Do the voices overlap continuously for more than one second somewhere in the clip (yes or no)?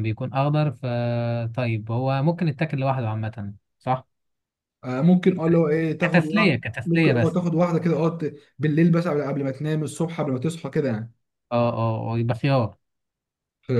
yes